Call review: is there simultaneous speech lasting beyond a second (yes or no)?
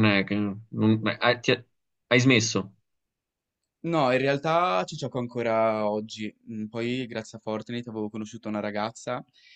no